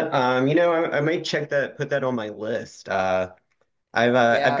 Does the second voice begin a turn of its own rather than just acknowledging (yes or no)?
yes